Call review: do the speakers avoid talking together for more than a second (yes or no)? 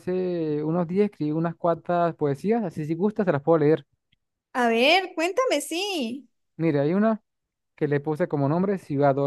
yes